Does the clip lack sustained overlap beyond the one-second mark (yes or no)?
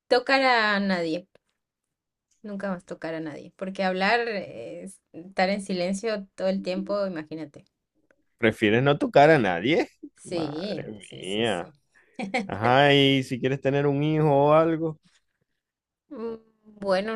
no